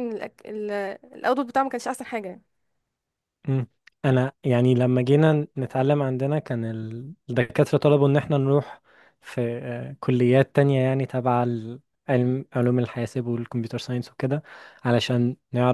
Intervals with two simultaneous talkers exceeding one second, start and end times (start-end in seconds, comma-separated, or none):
none